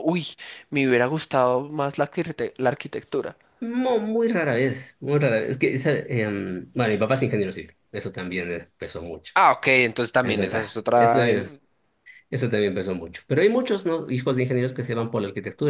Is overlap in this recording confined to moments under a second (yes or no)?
no